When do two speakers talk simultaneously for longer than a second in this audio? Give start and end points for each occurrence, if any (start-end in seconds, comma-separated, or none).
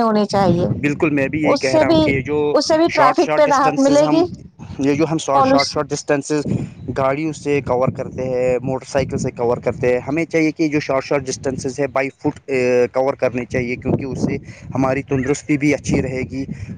3.0-4.2